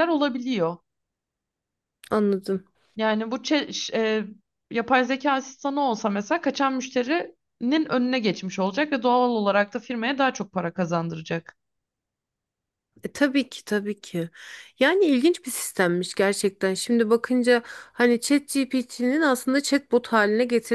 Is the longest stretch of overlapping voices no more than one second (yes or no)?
yes